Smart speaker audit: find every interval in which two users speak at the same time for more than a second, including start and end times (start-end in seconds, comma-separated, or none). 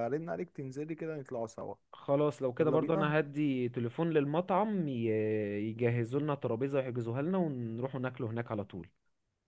none